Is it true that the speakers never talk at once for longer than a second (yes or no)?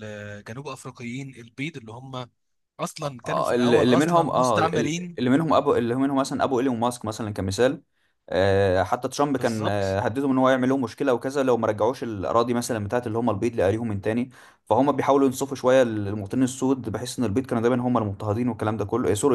no